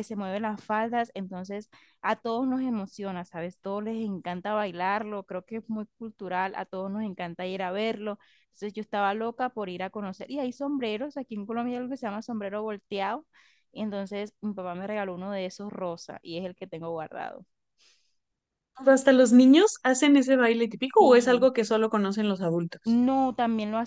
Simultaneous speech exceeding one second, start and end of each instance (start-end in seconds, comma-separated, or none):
none